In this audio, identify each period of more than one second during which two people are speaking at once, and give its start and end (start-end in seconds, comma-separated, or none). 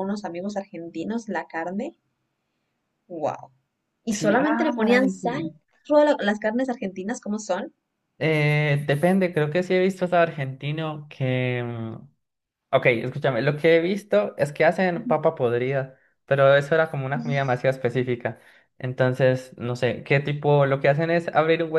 4.1-5.5